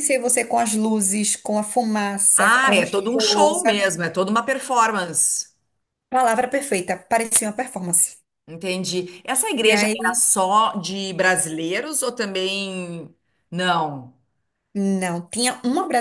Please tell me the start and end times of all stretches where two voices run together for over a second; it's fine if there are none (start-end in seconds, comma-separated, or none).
2.4-3.9